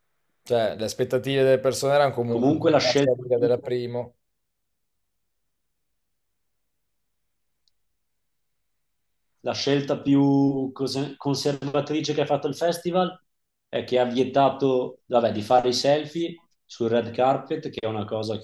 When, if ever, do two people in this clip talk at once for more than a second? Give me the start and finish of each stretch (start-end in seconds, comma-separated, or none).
2.3-3.5